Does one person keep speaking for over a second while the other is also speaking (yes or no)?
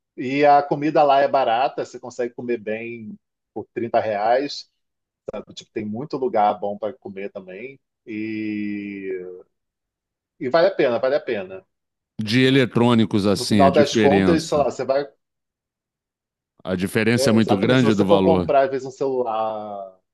yes